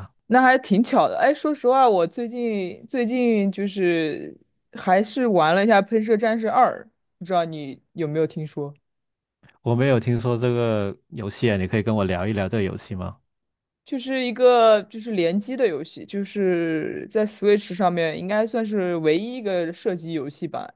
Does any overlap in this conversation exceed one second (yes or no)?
no